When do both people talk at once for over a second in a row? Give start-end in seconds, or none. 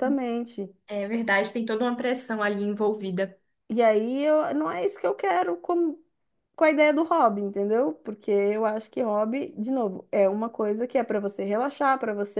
none